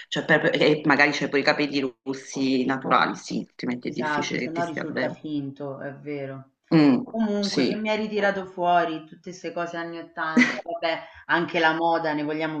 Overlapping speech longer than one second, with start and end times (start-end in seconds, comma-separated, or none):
3.8-5.2